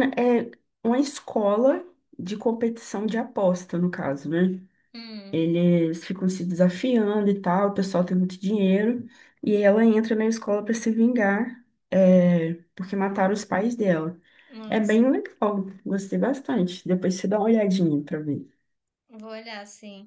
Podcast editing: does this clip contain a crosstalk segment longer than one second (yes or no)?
no